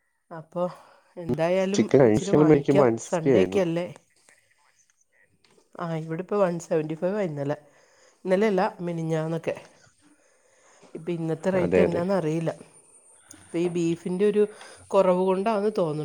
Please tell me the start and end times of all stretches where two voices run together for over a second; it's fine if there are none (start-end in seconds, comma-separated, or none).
1.8-3.6